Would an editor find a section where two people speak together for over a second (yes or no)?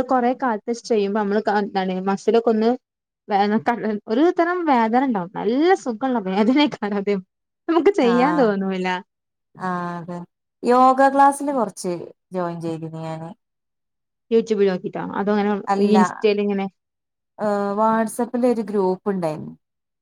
no